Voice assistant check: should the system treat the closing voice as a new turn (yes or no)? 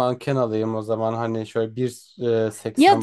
yes